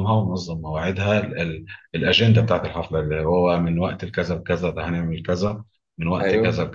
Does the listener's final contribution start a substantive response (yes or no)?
yes